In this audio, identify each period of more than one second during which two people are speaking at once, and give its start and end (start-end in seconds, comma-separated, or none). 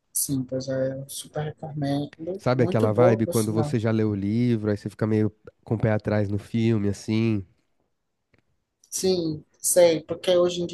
2.4-3.8